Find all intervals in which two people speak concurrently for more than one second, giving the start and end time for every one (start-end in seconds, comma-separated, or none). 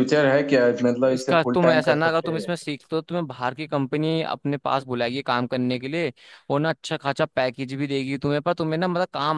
1.1-2.5